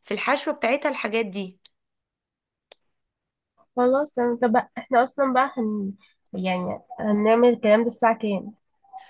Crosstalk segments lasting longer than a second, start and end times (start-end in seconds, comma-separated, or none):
none